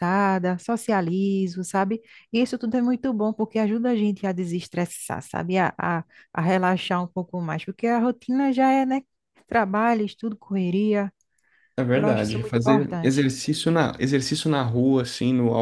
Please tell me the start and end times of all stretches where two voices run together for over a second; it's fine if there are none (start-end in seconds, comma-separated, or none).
11.9-13.3